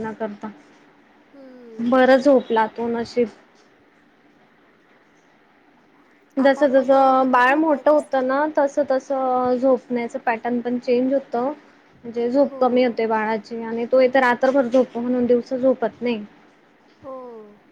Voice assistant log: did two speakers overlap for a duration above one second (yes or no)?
yes